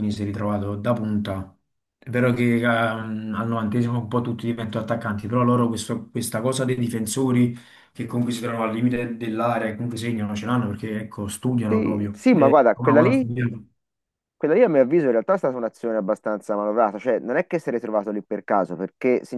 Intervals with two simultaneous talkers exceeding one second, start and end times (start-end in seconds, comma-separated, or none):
11.7-13.3